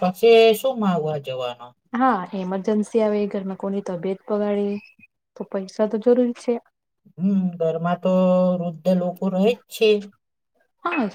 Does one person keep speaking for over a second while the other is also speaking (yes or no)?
no